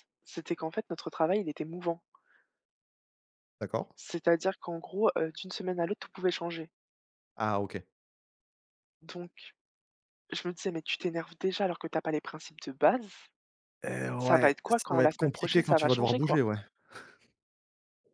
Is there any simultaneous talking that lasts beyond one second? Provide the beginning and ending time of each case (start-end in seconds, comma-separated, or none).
14.2-16.4